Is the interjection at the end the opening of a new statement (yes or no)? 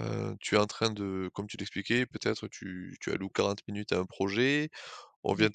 no